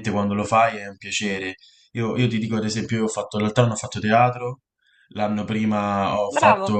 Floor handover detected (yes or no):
no